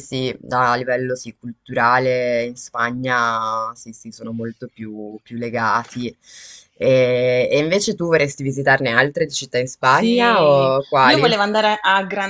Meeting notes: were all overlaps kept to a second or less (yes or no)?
no